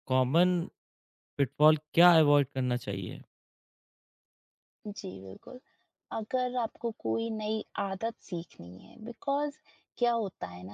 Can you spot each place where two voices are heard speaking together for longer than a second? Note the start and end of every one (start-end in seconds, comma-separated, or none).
none